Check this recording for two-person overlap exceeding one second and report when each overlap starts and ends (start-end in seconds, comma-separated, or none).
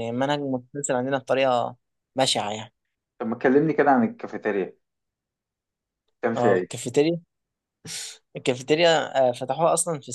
none